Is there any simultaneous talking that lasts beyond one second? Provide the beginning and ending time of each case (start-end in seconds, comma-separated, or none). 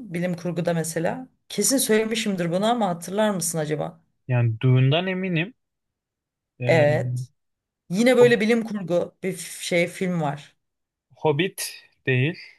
none